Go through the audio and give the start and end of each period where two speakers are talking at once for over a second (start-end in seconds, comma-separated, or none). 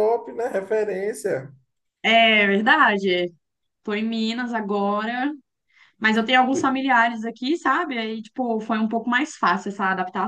none